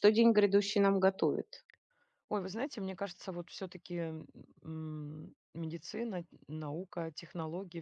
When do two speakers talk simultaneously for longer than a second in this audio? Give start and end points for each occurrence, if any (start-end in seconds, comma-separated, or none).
none